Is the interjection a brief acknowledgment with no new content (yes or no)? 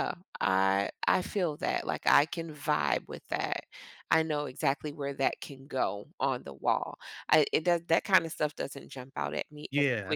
no